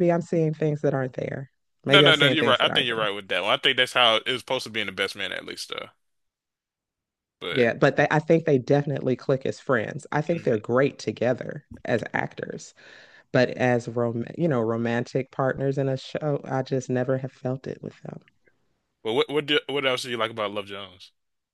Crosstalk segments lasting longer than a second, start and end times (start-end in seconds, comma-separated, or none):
1.9-3.1